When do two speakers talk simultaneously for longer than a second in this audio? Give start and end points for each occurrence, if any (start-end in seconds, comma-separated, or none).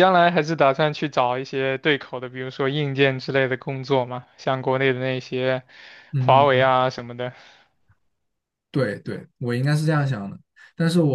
none